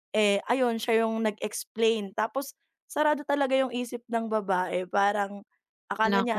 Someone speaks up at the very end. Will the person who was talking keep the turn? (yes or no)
yes